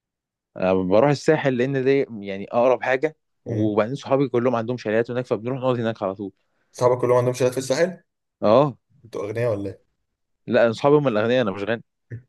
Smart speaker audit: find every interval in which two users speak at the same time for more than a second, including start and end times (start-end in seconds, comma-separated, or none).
none